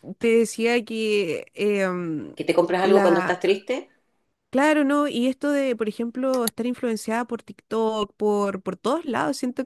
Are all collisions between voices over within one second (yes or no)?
yes